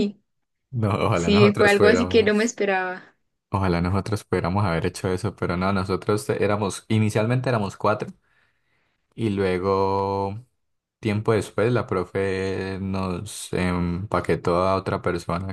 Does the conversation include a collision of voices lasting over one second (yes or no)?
yes